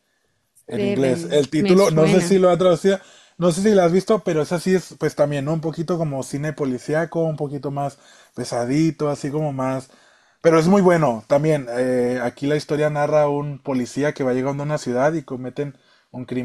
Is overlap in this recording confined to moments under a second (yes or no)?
no